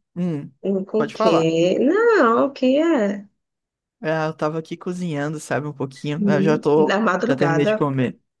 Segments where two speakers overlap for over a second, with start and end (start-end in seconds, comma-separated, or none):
6.2-7.7